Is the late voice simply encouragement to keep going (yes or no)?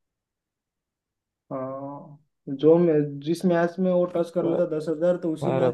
yes